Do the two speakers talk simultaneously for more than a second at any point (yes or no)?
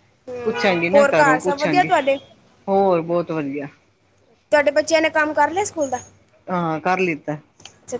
no